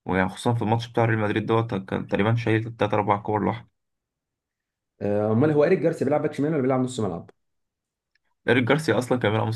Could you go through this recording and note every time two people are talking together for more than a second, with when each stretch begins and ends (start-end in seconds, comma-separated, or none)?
none